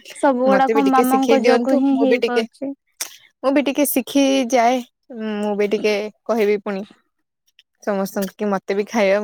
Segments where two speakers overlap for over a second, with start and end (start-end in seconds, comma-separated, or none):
0.6-2.4